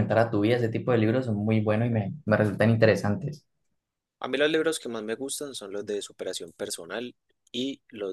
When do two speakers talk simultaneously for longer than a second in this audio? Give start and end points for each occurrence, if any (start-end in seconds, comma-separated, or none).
none